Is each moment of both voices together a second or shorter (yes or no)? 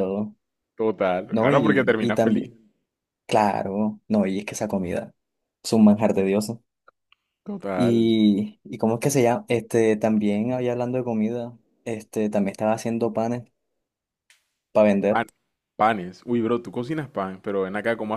no